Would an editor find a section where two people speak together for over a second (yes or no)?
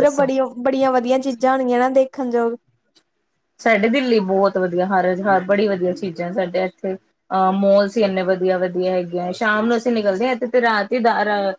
no